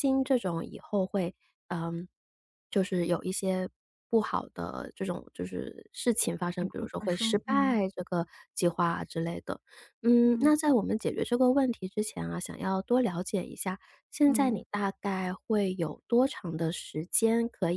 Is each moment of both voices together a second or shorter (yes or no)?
no